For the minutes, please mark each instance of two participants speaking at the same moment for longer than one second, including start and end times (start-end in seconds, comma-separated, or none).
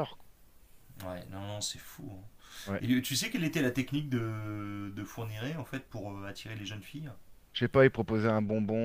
none